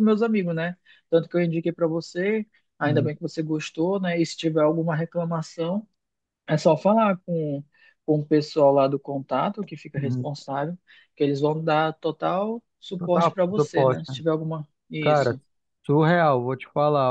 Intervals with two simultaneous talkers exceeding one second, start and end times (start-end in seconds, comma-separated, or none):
12.9-14.2